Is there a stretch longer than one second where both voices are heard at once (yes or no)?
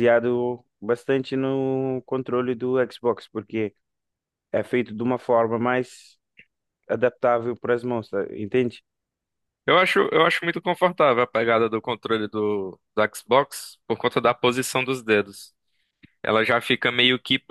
no